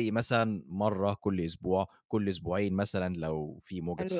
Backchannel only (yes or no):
no